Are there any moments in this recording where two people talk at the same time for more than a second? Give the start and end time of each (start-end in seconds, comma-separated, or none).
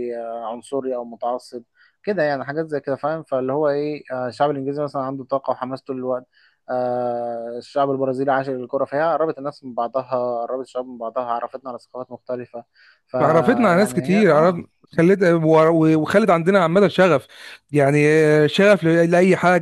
13.2-14.6